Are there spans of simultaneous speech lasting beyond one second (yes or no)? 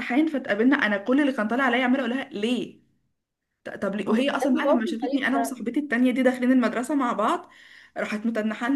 yes